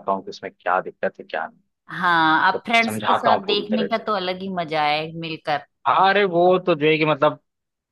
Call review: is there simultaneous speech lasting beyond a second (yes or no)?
yes